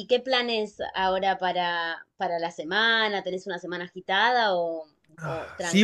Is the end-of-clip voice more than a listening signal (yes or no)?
yes